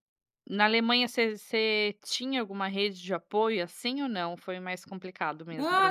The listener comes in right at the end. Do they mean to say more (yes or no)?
yes